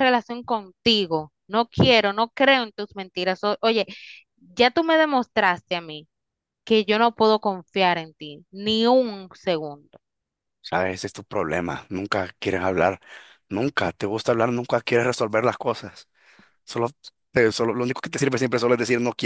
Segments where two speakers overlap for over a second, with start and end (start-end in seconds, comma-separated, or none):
none